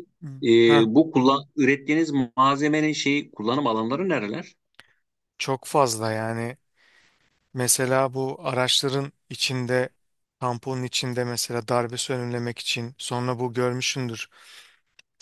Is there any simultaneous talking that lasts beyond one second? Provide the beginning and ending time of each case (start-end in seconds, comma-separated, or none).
none